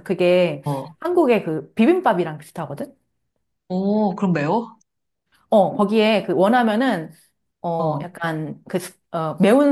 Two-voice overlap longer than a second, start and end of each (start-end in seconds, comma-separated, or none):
none